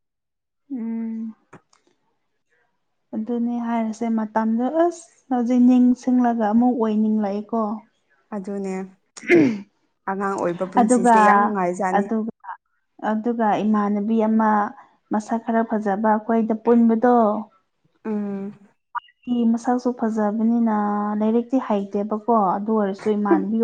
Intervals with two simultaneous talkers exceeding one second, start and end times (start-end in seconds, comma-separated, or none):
none